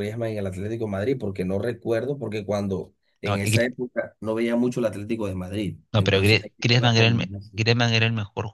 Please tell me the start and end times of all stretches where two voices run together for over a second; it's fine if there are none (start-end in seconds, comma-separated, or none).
5.9-7.6